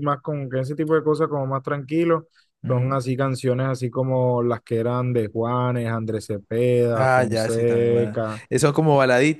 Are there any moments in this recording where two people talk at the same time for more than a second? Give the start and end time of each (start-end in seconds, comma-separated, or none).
6.9-8.4